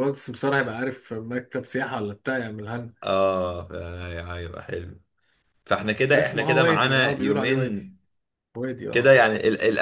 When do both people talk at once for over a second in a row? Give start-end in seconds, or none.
6.2-7.9